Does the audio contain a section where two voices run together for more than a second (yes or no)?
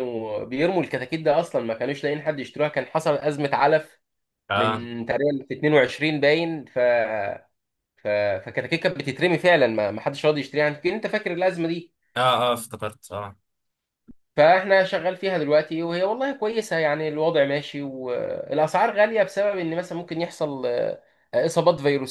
no